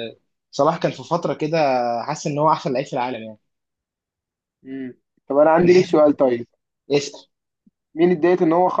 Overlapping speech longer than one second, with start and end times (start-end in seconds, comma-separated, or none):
none